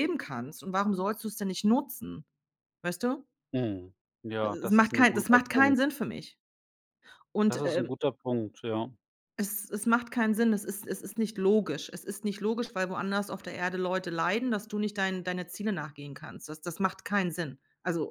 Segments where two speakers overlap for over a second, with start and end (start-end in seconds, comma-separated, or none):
4.4-5.8